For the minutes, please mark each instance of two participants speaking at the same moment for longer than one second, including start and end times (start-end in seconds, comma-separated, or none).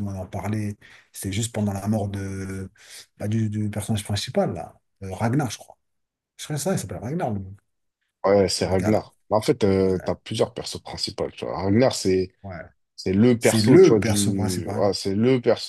13.4-14.9